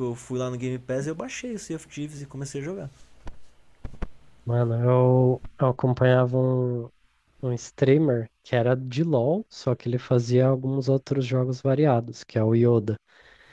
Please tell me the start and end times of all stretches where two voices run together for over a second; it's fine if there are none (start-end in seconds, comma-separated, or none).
none